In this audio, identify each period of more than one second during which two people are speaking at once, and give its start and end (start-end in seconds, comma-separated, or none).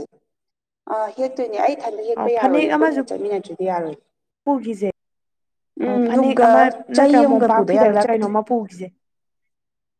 7.0-8.3